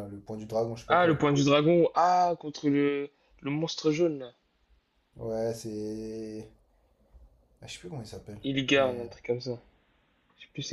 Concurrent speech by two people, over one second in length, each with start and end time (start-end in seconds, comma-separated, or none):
none